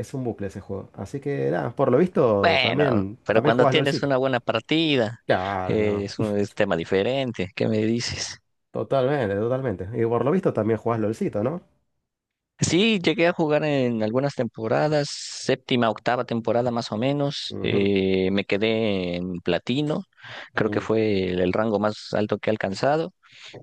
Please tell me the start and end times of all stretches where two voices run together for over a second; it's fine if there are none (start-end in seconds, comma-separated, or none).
2.4-4.1